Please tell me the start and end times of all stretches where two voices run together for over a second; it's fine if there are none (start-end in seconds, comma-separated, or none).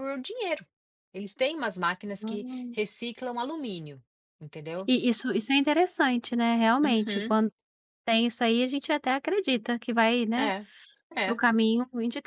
none